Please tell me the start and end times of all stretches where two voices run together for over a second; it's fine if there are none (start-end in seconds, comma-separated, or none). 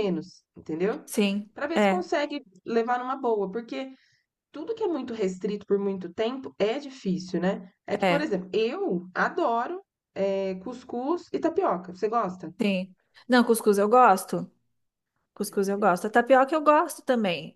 none